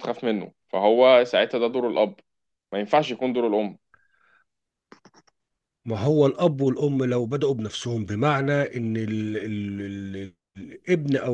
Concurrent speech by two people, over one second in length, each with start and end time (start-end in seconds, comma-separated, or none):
none